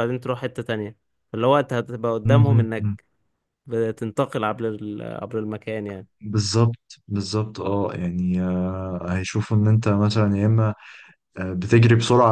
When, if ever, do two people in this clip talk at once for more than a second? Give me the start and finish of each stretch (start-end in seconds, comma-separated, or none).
none